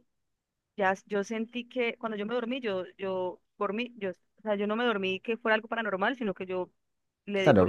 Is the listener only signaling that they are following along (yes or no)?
no